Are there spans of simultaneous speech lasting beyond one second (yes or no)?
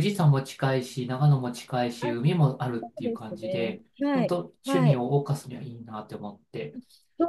yes